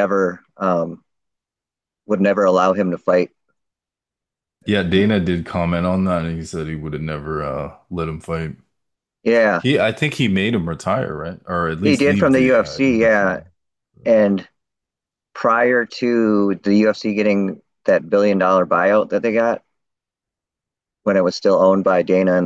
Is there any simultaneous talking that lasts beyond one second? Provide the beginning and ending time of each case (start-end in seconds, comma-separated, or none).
11.8-13.2